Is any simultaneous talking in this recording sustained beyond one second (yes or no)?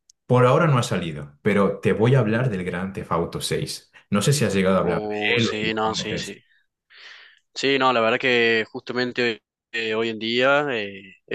yes